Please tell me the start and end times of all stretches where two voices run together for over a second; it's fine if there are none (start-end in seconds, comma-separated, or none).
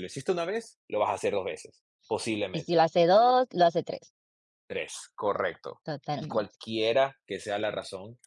none